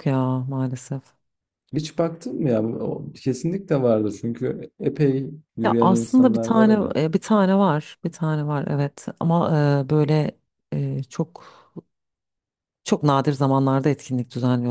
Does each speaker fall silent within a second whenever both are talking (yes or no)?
no